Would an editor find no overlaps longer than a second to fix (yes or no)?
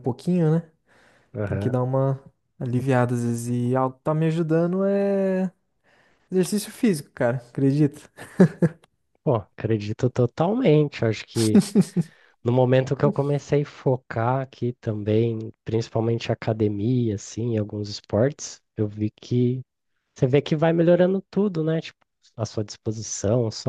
yes